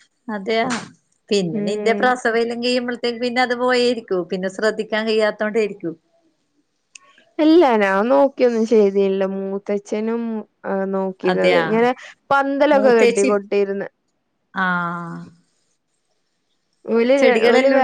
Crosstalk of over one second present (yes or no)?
no